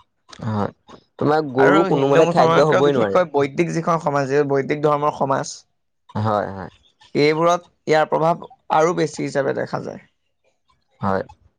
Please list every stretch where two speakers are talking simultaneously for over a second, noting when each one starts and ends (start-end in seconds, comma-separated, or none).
1.6-3.2